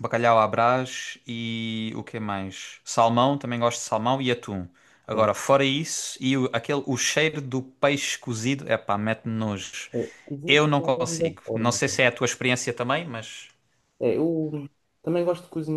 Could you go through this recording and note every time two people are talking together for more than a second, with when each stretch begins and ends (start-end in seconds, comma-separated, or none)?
10.5-12.0